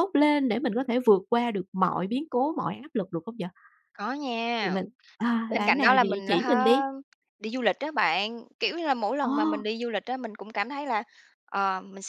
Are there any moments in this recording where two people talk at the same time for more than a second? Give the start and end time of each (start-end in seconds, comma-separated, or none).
5.5-6.8